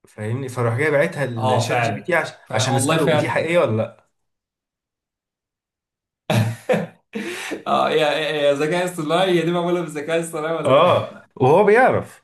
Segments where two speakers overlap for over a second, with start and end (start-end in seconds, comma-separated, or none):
1.4-3.4